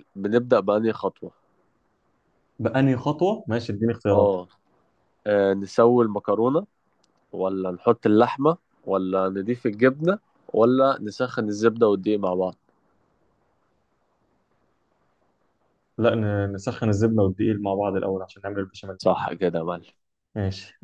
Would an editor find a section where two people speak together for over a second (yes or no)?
no